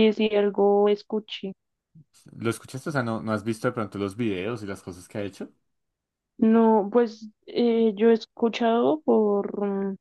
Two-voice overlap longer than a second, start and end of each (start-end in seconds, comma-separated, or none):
none